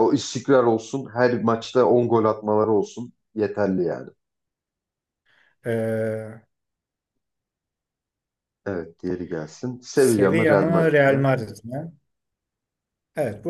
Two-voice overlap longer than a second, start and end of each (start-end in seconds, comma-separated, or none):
9.9-11.3